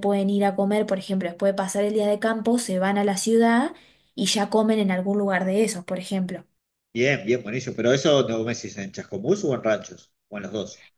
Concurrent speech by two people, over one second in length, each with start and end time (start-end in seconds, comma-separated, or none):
none